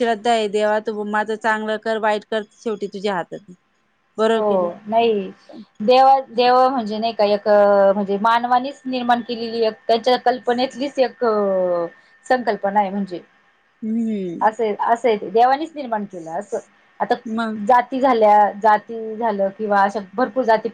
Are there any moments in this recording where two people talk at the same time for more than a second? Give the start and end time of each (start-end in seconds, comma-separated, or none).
none